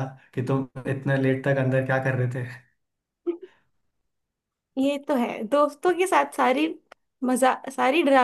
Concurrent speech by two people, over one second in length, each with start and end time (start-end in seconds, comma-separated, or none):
none